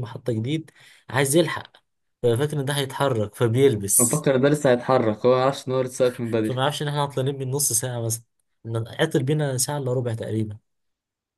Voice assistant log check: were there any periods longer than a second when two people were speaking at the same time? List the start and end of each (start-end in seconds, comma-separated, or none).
none